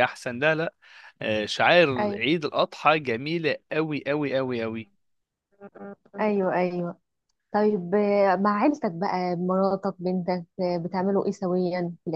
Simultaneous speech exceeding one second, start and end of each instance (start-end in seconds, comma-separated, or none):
none